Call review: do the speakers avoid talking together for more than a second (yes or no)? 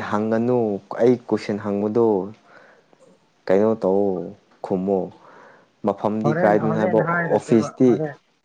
no